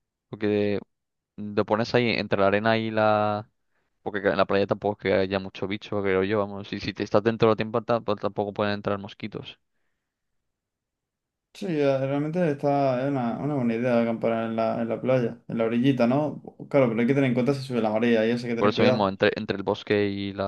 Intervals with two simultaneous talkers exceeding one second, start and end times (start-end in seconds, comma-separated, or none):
none